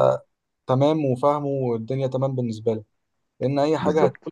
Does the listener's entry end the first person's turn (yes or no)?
no